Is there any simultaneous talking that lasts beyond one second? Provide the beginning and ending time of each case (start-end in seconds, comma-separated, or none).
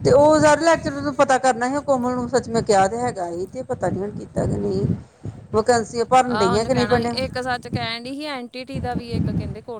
none